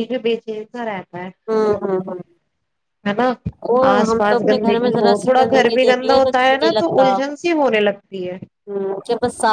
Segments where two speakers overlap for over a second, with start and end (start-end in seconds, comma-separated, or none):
3.9-7.0